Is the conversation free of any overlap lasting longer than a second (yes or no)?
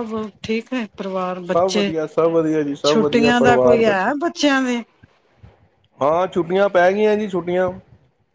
no